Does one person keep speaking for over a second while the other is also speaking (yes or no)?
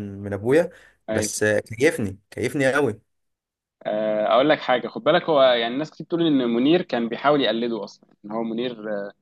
no